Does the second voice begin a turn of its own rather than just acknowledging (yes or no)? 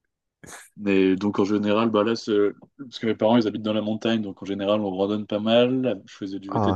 no